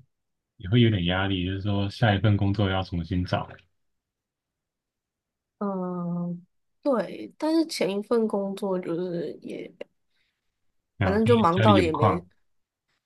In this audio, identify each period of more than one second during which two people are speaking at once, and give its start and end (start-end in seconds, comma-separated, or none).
11.0-12.2